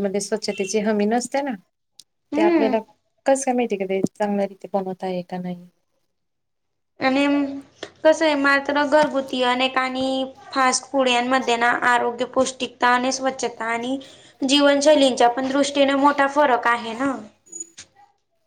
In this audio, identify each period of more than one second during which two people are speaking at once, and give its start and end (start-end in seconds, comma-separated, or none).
none